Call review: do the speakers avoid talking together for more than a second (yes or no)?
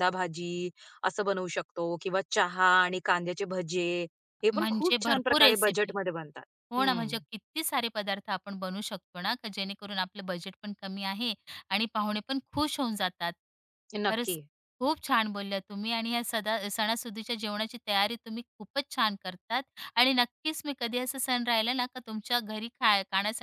no